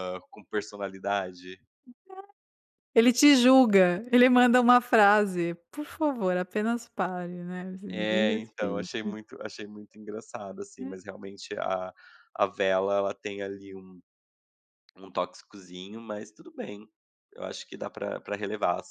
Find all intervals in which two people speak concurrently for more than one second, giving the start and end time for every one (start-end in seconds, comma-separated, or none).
7.9-9.1